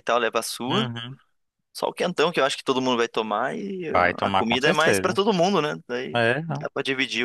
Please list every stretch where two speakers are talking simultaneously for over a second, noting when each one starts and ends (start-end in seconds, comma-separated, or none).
3.9-5.2